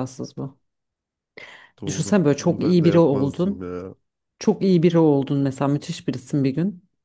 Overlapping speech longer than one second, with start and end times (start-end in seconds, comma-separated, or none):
1.9-3.7